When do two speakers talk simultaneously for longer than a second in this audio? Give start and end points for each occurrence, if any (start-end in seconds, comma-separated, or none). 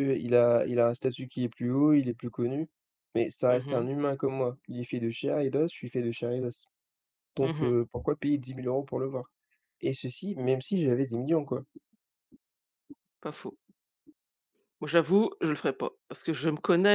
none